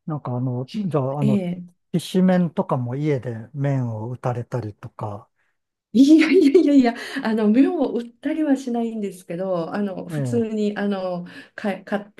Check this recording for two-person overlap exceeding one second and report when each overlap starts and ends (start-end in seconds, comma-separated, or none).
none